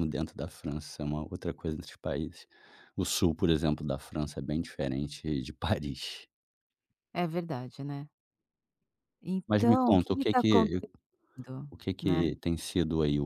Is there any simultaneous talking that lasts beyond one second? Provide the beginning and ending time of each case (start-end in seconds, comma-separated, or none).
9.5-10.8